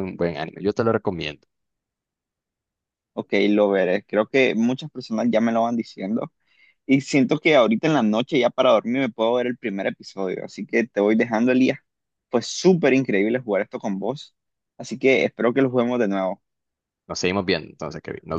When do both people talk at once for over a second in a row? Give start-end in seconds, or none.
none